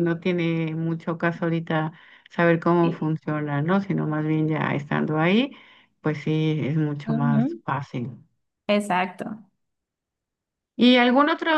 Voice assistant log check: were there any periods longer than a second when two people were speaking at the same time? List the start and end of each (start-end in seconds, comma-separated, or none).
none